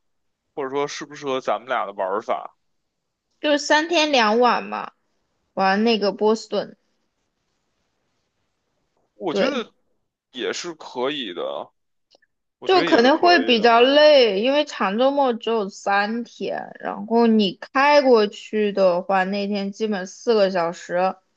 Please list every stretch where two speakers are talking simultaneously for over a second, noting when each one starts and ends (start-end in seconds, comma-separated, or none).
12.7-13.9